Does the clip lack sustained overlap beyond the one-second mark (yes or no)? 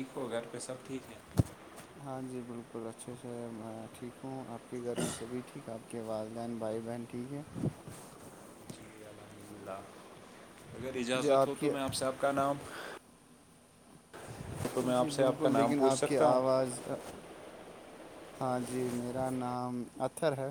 no